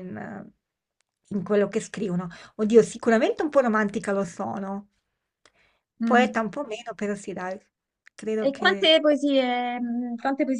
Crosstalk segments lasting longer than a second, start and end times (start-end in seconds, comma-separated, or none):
none